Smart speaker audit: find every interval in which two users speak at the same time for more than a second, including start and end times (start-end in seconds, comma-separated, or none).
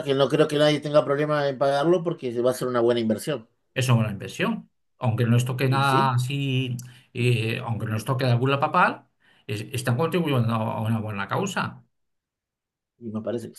none